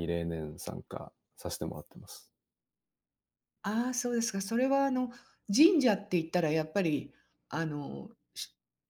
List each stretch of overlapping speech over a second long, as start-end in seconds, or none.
none